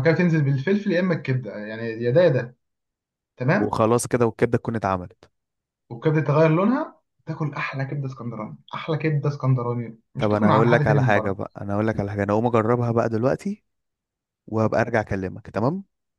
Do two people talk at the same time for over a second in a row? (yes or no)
yes